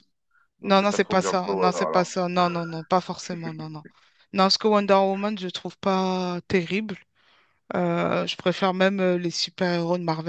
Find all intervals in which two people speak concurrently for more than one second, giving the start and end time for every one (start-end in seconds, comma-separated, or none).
0.6-2.1